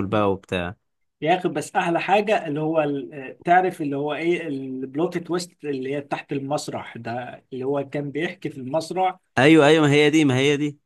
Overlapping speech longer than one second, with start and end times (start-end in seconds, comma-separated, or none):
none